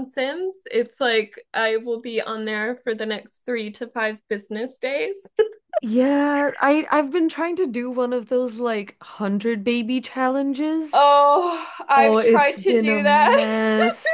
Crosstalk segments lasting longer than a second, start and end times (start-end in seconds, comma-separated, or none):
11.9-13.4